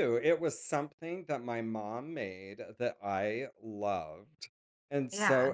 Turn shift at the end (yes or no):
no